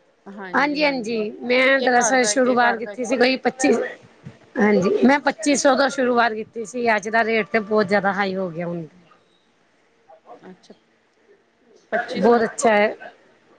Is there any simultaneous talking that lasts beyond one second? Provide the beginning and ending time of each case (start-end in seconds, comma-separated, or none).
1.2-3.1